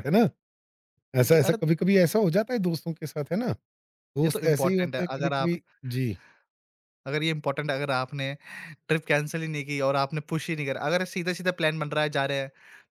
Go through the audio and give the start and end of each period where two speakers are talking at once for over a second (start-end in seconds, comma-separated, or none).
4.2-5.5